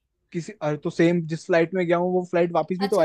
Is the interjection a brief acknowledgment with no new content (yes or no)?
no